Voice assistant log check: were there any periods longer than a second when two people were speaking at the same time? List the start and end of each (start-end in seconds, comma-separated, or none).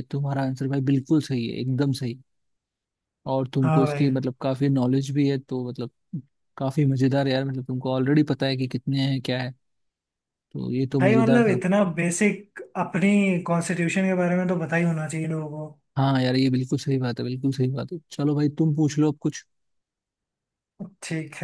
none